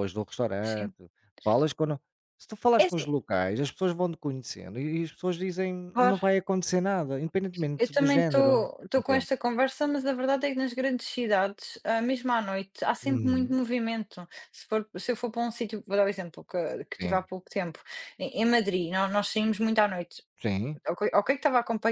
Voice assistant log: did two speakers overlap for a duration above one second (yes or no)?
yes